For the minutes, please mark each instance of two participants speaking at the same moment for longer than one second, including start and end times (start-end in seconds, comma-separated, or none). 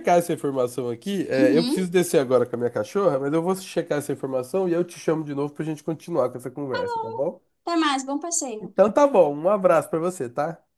none